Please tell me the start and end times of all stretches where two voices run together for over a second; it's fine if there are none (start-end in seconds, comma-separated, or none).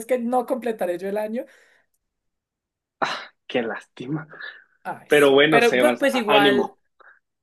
5.1-6.8